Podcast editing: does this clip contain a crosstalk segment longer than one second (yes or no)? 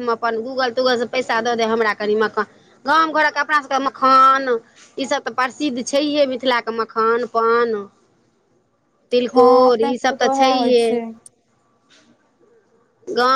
yes